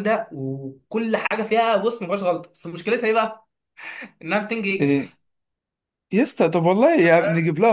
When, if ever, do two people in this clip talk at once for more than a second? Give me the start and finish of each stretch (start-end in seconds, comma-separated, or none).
none